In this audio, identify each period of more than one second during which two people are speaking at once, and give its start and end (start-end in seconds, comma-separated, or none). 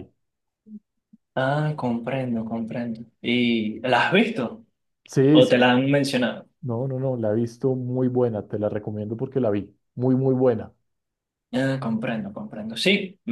none